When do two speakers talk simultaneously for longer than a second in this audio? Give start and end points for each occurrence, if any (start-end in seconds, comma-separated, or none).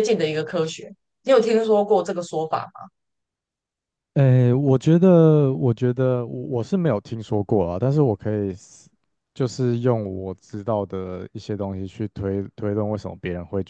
none